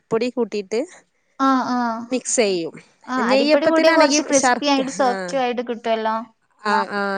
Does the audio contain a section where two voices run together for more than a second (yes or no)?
yes